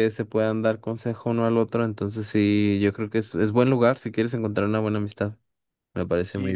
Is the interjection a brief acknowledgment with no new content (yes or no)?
no